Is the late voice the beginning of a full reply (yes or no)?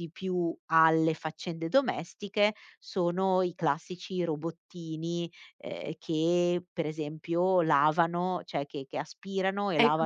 yes